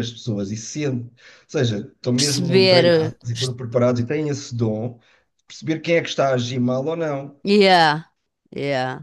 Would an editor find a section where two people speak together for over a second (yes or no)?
yes